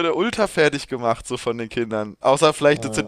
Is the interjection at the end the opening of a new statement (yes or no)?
no